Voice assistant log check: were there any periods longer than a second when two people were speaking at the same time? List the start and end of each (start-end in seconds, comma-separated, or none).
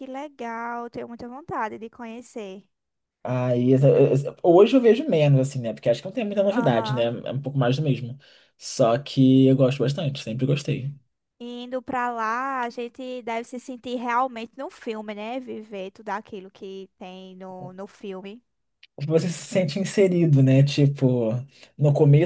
none